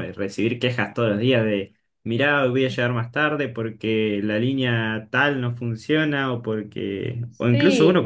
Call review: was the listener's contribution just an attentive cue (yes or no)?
yes